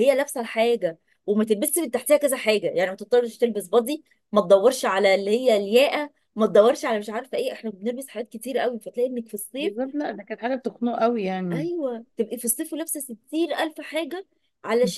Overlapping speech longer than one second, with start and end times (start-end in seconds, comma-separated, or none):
none